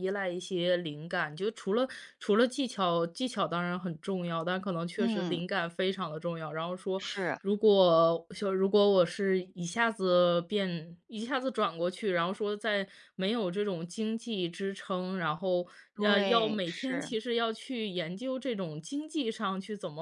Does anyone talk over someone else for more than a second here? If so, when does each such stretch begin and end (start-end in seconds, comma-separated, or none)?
15.9-17.1